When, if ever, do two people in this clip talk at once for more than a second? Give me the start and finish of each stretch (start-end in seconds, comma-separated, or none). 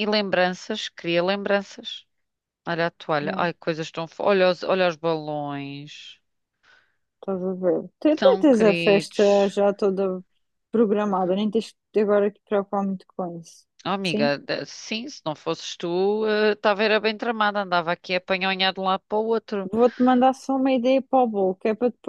8.2-9.5